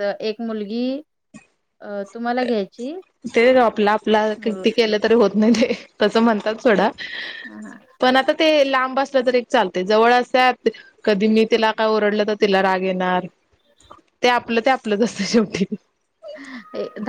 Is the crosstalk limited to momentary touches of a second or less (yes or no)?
yes